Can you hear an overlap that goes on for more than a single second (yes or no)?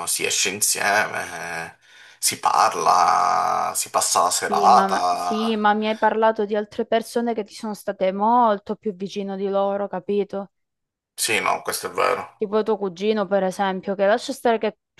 yes